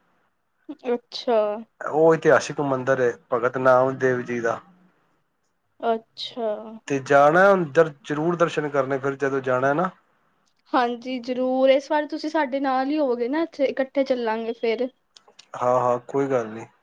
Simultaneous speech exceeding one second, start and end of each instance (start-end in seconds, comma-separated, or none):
none